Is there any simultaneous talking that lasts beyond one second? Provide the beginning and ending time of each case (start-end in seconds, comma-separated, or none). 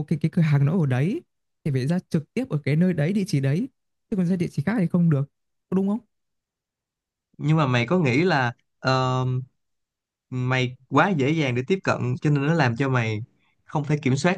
none